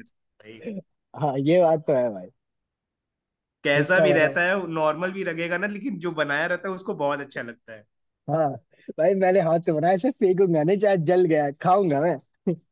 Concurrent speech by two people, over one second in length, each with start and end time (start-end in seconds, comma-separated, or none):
none